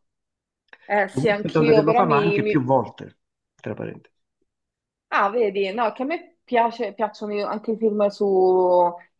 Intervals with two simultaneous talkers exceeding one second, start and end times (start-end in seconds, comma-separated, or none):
1.1-2.7